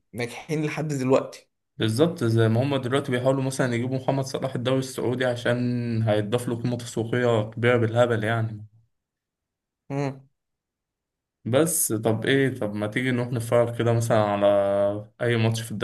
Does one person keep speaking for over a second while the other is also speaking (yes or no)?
no